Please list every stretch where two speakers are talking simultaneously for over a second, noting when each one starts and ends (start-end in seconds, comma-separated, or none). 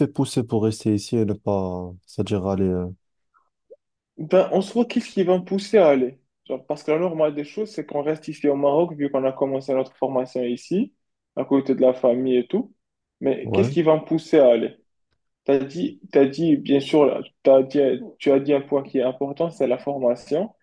none